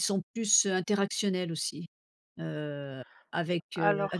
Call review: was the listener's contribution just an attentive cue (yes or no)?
yes